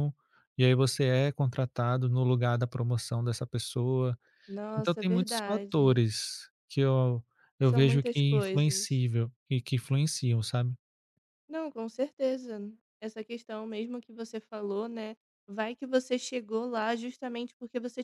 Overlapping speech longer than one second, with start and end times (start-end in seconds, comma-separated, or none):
4.8-6.0, 7.6-9.0